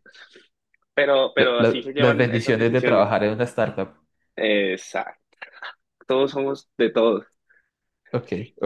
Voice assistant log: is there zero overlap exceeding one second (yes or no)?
no